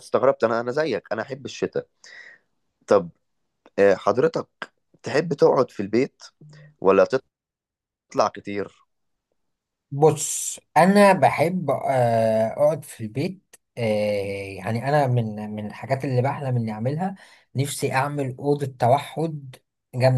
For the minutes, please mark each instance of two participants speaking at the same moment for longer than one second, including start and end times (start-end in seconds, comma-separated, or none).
none